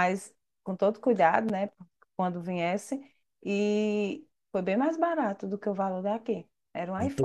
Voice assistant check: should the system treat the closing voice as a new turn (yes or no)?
yes